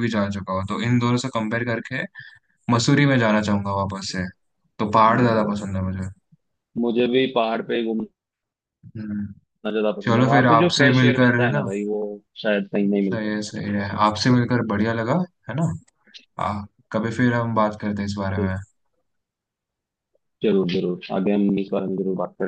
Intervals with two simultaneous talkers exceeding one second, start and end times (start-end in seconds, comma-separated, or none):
10.0-11.6